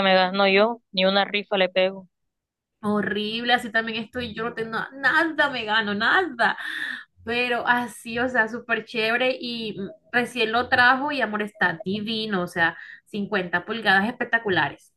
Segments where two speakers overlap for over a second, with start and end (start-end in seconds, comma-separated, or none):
none